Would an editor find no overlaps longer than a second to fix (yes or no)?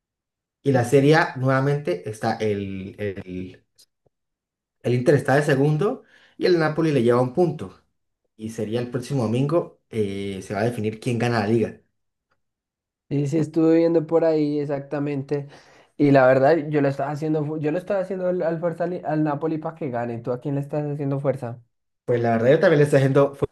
yes